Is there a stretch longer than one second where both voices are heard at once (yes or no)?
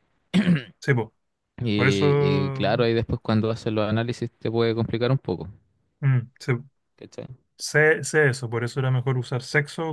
no